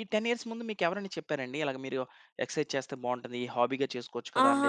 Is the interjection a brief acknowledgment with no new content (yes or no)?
no